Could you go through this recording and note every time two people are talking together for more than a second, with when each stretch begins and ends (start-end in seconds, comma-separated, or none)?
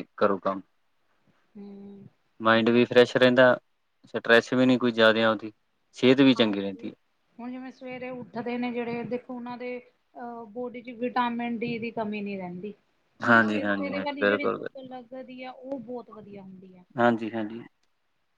13.2-14.8